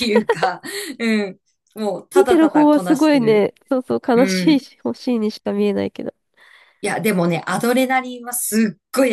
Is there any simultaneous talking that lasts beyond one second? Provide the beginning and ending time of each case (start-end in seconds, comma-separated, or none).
2.1-3.5